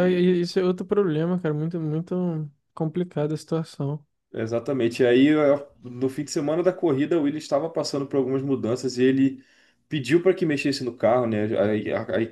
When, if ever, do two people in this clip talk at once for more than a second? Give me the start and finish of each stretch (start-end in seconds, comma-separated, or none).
none